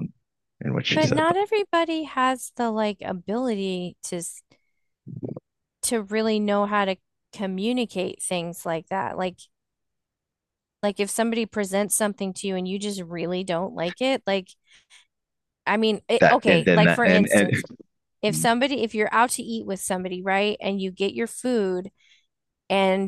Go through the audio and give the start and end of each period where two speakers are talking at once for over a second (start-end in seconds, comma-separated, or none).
16.2-17.5